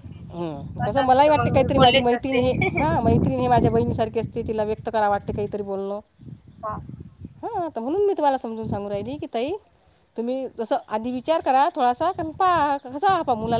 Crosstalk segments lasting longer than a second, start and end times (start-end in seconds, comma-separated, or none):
0.8-2.4